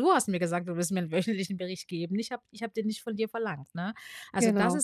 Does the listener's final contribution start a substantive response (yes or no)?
no